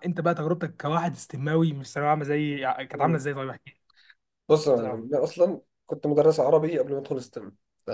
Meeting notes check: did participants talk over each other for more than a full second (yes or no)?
no